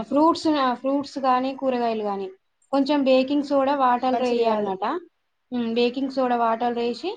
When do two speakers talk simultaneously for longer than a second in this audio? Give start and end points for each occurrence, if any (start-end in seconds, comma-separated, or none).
3.1-4.7